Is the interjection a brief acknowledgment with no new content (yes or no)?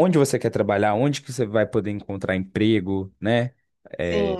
yes